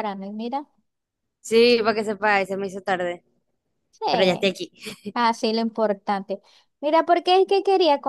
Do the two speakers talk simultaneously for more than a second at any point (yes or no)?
no